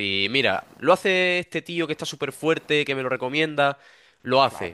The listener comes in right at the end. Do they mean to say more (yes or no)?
no